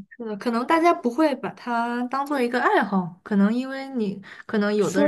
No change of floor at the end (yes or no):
no